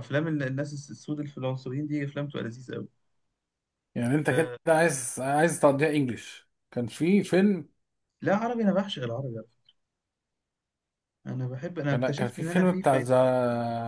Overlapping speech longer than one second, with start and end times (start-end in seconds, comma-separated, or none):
11.9-13.1